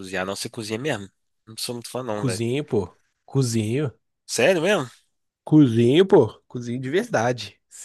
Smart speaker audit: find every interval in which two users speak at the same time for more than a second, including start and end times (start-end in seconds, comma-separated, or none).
none